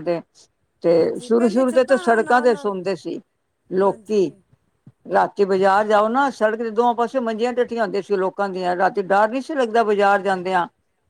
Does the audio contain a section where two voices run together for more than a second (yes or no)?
yes